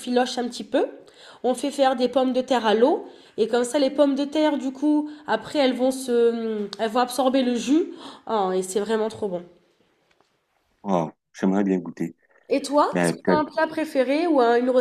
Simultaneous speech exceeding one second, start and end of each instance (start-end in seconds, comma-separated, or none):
none